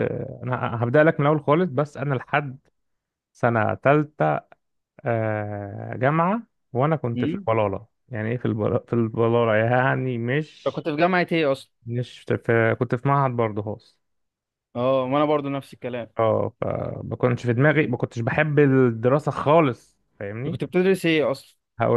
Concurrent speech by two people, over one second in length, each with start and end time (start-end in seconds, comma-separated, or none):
none